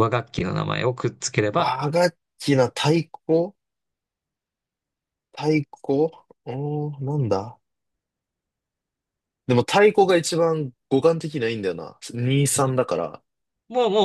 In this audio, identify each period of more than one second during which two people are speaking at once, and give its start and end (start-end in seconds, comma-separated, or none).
none